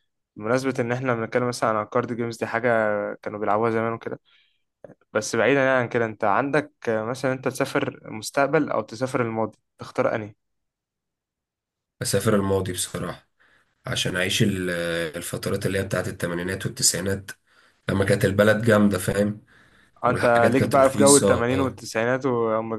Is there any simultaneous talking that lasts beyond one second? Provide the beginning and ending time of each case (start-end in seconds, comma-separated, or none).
20.1-21.5